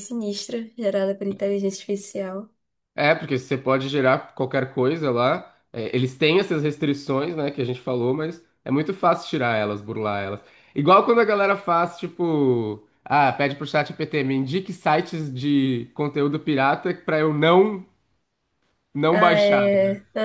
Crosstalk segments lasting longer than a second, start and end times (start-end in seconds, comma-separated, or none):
none